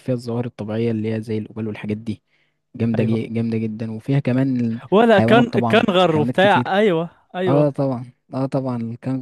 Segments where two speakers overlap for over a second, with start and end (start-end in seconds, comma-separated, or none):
4.9-6.7